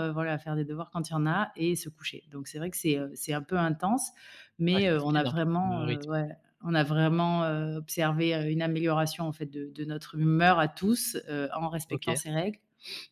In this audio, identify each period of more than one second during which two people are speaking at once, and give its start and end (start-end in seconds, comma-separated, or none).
4.7-6.1